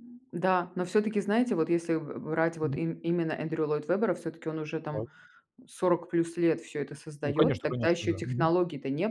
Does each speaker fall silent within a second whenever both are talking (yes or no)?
no